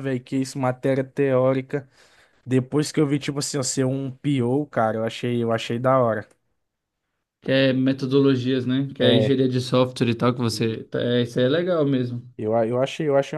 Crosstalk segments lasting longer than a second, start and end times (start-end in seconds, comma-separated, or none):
none